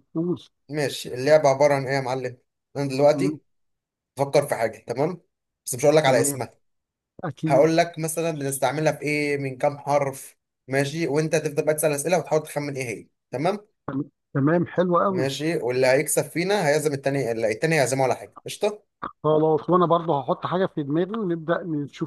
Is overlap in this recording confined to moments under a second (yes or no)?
yes